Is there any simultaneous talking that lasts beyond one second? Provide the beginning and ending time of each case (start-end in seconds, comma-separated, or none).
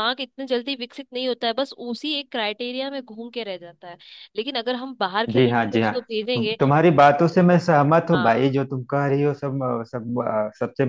5.3-6.6